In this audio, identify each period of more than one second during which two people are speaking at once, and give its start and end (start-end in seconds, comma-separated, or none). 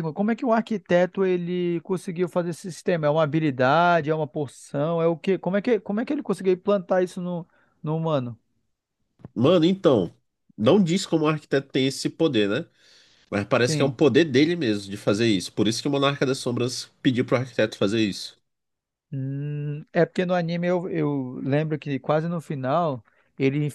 none